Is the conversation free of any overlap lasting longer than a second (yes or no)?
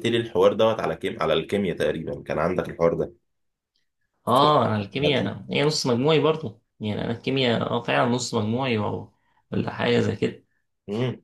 yes